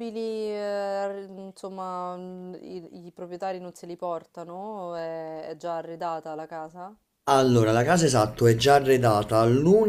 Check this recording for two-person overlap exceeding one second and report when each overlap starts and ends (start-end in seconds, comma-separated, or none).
none